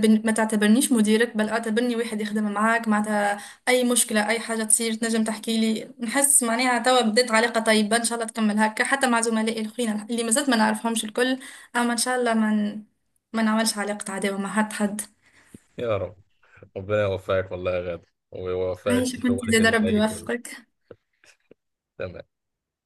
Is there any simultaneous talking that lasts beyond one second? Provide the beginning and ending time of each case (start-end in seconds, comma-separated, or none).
18.9-20.3